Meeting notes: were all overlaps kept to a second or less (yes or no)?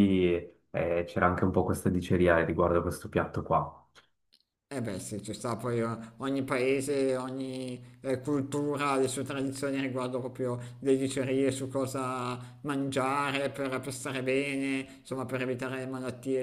yes